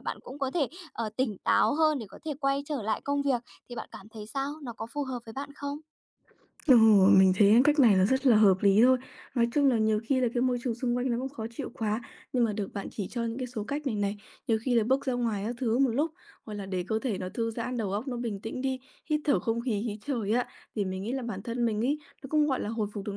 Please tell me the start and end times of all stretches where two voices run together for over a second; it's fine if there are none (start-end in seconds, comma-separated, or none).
none